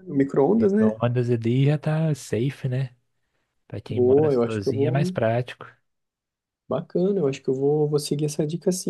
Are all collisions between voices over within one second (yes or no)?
no